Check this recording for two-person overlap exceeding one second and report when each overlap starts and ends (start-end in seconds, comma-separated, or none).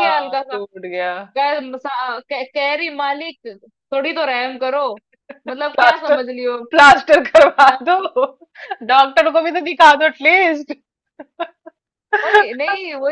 none